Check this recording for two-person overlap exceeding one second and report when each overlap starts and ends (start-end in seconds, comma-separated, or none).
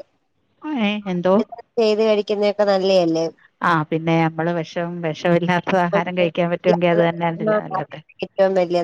none